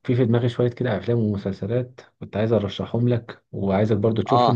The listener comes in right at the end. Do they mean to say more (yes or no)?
no